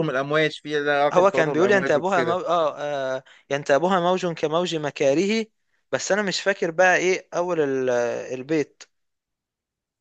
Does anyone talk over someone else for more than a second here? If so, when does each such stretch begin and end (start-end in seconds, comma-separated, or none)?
1.1-2.4